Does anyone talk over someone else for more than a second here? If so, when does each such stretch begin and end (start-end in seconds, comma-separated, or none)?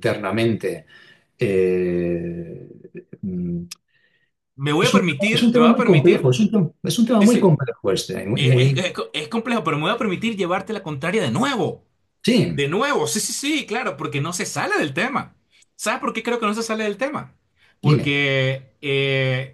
4.7-6.3